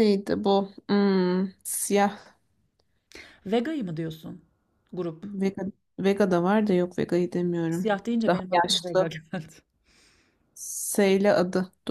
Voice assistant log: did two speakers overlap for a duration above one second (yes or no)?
yes